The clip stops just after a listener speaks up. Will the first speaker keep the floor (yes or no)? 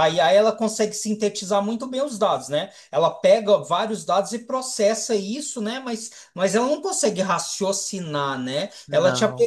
yes